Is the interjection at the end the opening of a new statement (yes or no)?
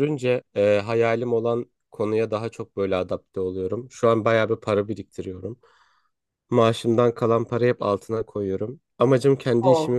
no